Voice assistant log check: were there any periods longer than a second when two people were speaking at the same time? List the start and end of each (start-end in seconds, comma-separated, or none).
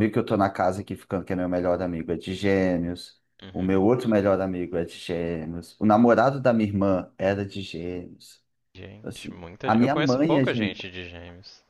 9.0-10.8